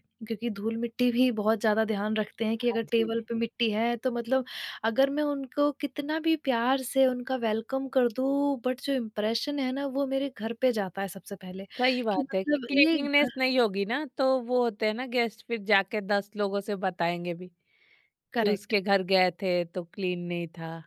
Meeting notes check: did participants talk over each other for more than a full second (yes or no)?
yes